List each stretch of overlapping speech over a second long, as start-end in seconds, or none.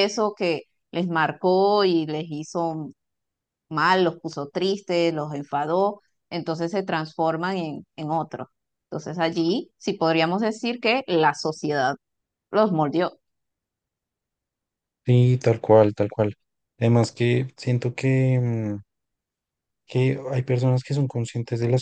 none